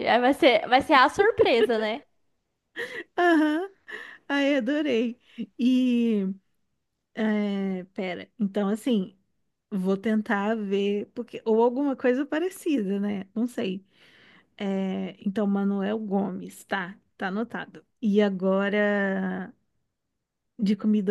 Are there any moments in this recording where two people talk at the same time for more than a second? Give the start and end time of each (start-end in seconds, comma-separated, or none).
none